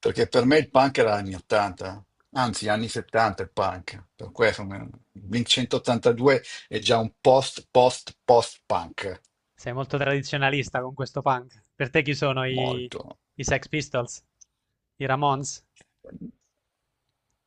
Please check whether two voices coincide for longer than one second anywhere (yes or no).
no